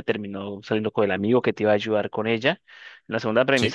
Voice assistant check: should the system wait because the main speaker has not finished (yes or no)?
yes